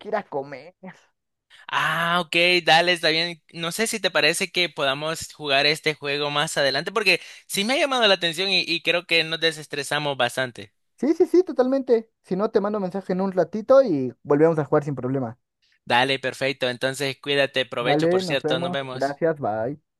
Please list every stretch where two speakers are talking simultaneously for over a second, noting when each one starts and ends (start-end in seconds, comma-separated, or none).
17.8-19.2